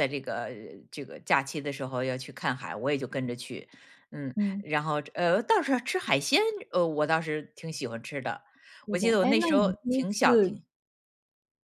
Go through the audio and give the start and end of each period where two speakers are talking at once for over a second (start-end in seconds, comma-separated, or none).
8.9-10.6